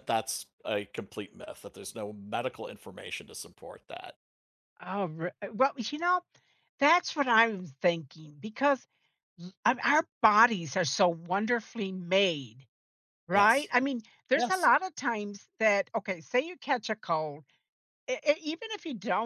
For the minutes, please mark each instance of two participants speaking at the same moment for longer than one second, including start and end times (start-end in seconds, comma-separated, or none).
none